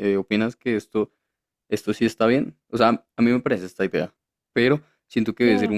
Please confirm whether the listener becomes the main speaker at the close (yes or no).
no